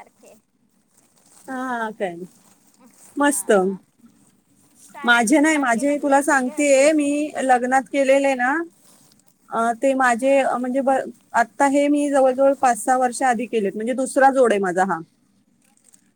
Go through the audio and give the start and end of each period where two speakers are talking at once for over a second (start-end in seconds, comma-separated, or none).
5.0-6.9